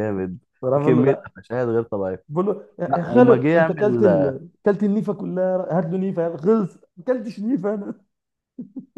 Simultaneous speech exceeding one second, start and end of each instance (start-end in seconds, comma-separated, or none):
2.9-4.3